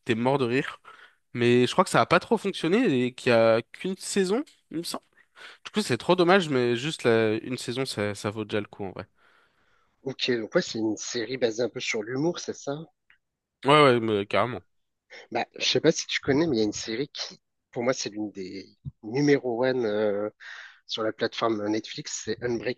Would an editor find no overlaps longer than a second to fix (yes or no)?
yes